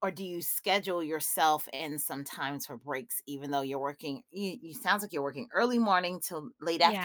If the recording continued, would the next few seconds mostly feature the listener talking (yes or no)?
no